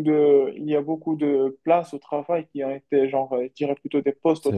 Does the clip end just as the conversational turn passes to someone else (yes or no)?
no